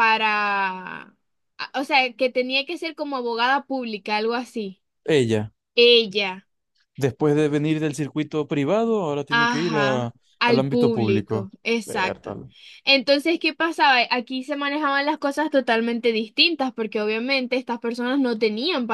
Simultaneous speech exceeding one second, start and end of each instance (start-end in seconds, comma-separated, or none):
9.3-12.3